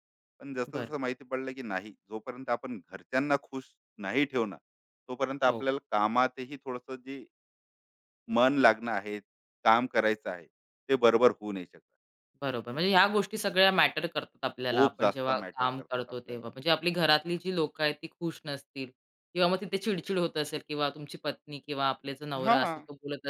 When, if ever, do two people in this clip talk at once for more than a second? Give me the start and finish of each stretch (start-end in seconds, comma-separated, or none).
14.7-16.5